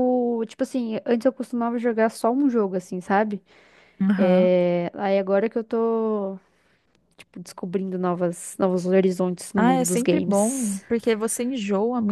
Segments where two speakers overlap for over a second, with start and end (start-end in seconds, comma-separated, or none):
9.6-10.8